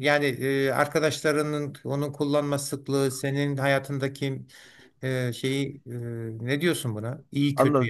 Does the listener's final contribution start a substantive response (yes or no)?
yes